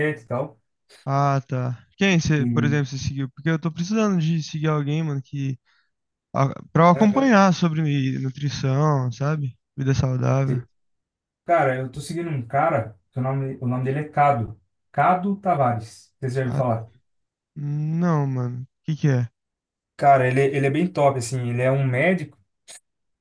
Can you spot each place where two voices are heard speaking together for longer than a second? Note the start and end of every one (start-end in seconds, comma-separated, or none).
none